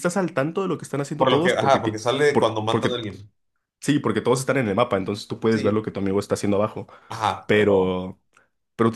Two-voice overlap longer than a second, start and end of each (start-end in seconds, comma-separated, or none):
1.2-3.0